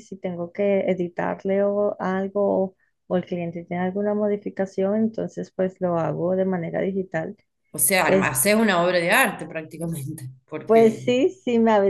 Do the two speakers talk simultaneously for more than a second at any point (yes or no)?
no